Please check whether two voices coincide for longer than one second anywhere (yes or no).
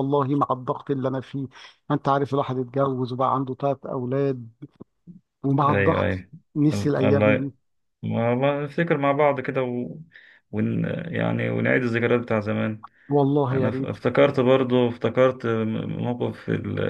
no